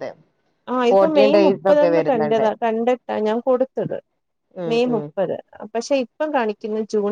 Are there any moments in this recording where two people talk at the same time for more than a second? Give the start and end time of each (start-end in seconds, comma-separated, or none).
0.9-2.5